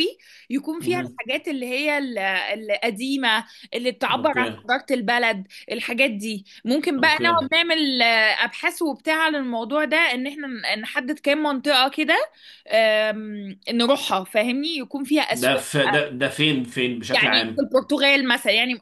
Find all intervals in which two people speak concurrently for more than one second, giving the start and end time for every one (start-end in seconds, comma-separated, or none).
none